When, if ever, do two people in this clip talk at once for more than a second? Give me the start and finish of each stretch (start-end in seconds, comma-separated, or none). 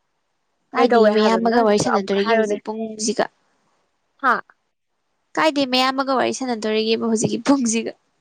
0.7-2.6